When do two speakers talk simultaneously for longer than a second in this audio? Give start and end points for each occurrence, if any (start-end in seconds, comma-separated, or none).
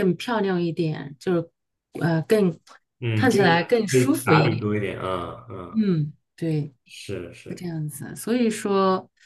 3.1-4.7